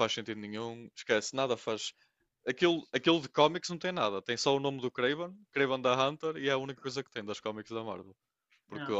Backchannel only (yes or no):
yes